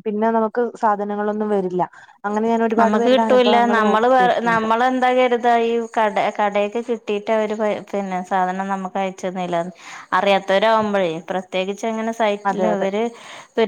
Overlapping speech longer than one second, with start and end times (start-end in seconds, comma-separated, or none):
2.8-4.4